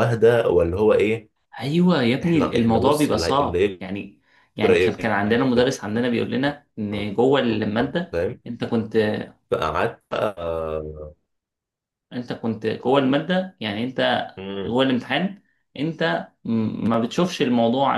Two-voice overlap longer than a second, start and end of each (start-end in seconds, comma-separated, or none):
2.2-3.8